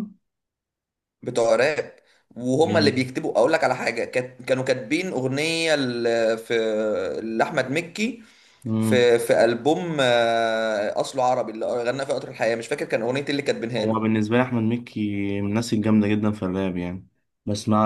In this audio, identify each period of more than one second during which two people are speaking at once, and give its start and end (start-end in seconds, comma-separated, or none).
none